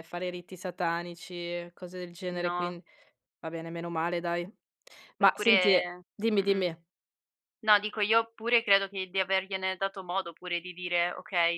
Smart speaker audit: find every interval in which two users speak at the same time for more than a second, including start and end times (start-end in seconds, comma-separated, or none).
5.2-6.7